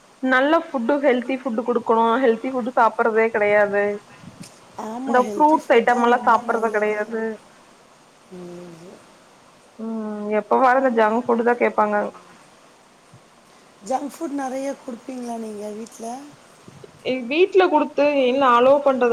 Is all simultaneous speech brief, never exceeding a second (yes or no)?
no